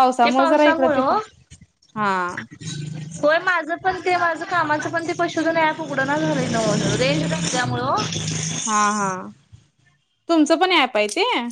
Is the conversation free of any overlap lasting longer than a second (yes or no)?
yes